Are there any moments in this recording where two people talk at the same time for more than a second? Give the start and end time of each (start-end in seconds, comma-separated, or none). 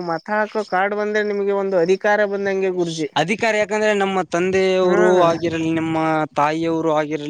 none